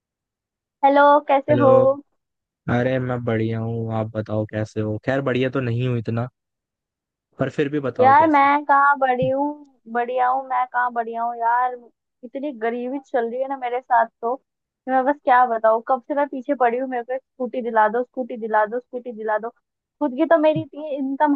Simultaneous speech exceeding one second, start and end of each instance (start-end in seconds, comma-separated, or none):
none